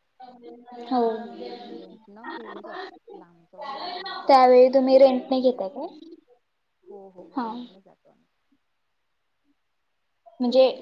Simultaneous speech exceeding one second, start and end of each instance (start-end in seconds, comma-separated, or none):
4.3-5.9